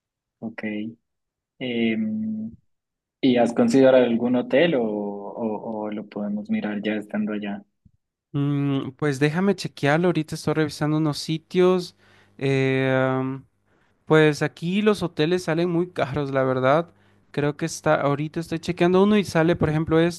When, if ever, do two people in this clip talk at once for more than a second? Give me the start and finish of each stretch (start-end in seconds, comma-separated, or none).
none